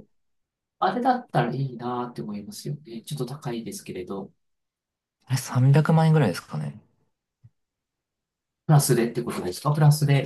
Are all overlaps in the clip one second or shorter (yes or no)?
yes